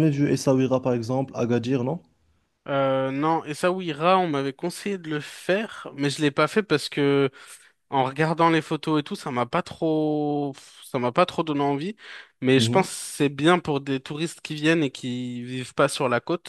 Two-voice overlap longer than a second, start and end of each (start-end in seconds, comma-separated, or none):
none